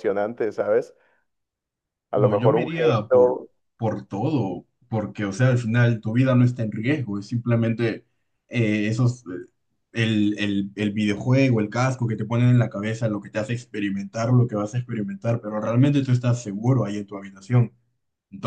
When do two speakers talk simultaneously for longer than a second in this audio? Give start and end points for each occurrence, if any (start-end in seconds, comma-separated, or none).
2.1-3.4